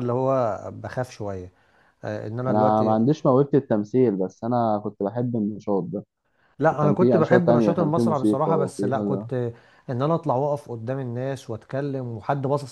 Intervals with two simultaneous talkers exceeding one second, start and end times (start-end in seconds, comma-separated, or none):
6.7-9.3